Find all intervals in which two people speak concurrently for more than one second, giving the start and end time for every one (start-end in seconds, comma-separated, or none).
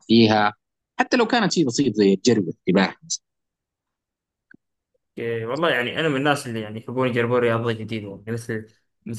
none